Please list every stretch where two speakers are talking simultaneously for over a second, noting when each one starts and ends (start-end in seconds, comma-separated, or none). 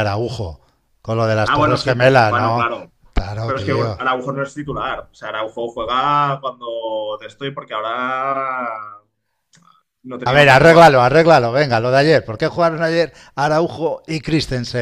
1.4-2.7